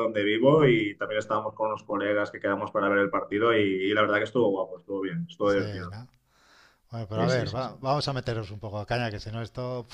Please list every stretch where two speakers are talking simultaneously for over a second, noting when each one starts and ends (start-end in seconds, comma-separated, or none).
none